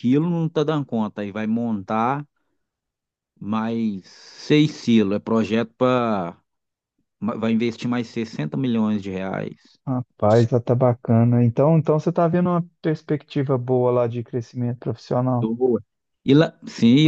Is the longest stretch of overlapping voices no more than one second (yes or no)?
yes